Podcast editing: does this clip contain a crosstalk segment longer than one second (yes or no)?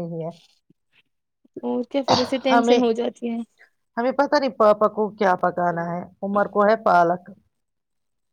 no